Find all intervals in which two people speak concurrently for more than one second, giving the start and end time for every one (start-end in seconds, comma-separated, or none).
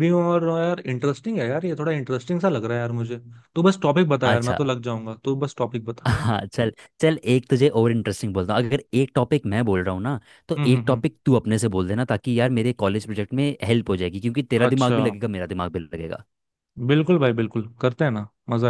none